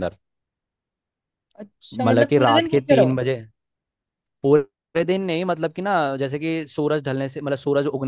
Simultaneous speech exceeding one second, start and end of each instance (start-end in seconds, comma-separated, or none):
1.9-3.2